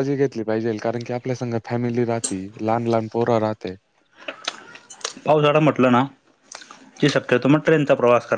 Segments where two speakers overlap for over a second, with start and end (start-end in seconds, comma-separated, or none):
none